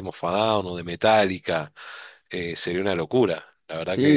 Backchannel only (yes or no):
no